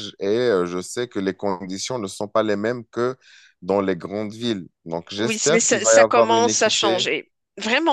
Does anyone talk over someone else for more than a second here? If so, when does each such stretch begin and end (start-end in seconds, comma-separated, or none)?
5.2-7.0